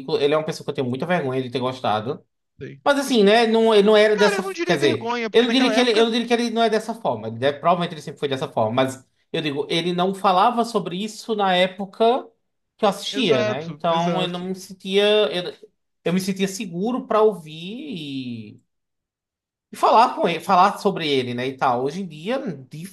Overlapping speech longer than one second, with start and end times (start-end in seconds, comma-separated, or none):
4.1-6.0, 13.1-14.5